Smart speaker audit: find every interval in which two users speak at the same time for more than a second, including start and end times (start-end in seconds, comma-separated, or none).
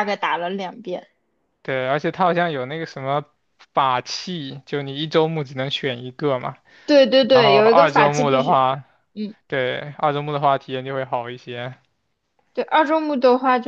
7.3-8.6